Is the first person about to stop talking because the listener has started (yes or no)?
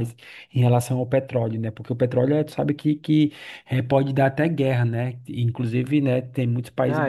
yes